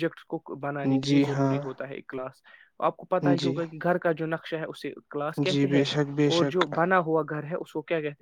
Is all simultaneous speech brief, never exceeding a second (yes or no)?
yes